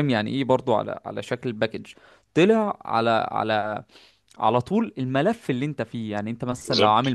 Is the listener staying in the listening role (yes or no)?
yes